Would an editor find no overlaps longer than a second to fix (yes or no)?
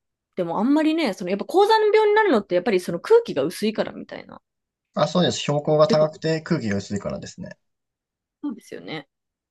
yes